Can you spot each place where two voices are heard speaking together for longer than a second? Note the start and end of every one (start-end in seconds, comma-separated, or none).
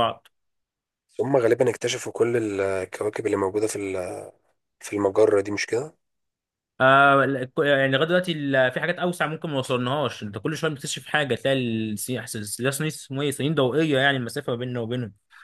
none